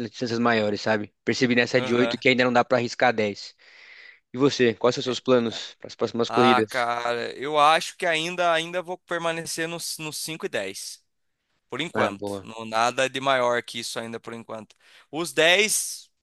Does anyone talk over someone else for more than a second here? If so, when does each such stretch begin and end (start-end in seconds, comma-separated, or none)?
none